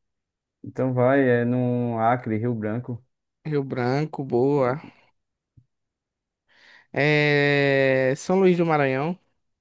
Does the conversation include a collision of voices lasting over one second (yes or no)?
no